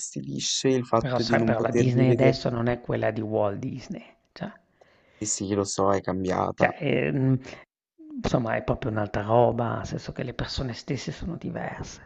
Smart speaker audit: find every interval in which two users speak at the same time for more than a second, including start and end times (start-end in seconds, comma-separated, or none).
1.0-2.4